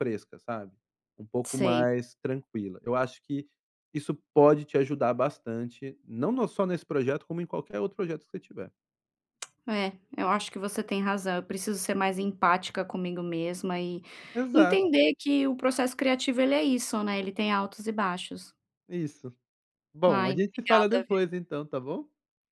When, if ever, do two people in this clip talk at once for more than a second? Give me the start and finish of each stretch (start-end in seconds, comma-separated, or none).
20.1-21.4